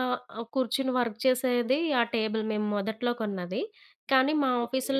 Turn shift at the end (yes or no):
no